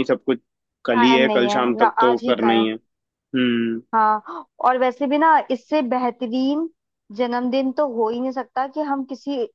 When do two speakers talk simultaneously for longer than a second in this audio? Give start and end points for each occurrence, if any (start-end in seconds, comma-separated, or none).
0.9-2.7